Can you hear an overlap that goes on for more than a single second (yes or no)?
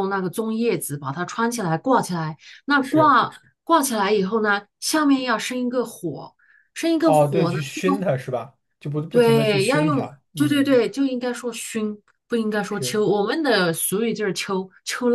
yes